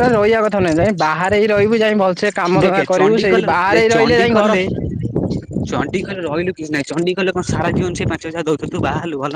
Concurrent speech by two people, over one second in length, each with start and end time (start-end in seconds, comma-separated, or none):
2.6-4.5